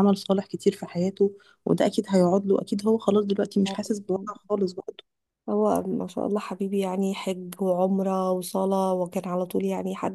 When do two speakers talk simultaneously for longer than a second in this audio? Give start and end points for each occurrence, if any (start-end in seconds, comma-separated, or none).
none